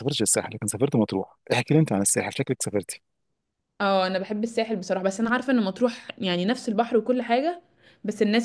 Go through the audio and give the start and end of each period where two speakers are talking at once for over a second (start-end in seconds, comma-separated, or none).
none